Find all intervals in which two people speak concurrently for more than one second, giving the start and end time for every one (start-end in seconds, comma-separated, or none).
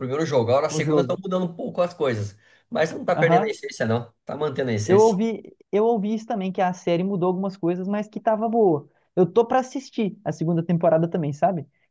none